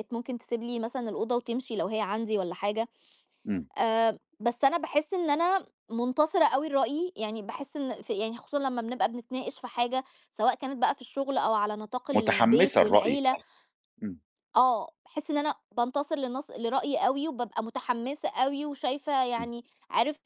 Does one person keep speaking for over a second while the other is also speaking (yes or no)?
yes